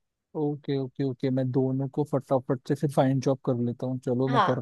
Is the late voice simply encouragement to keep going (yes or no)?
no